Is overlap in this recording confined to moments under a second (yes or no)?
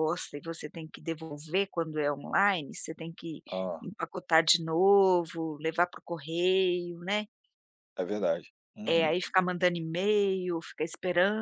yes